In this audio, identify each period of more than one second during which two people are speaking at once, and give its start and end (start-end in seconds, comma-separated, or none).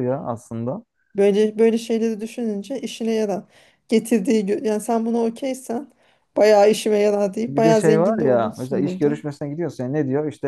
7.5-9.2